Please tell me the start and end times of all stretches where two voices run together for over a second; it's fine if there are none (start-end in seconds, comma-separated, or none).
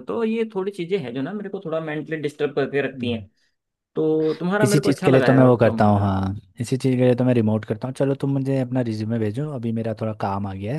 4.6-6.0